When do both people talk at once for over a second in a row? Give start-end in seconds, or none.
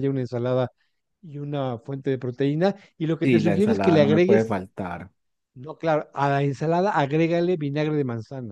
3.2-4.6